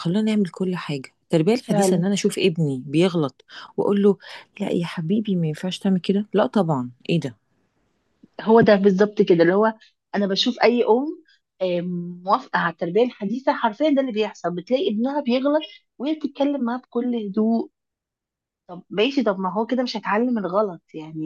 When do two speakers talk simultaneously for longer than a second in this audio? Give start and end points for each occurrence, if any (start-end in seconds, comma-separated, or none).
none